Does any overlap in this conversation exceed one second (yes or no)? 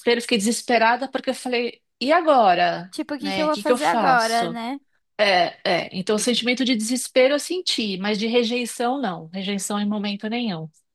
yes